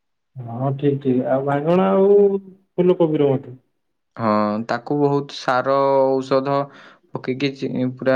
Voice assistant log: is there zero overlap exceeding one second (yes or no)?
yes